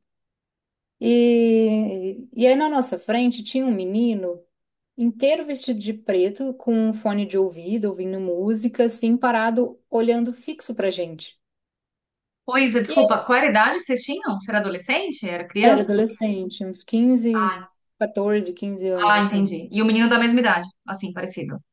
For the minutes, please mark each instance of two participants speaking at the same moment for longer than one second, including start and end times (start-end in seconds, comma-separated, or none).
none